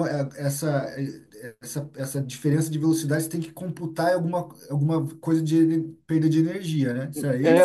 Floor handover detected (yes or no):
yes